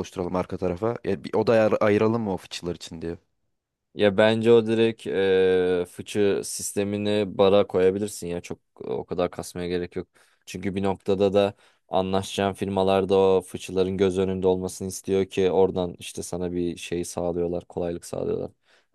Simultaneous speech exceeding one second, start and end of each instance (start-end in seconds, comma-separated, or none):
none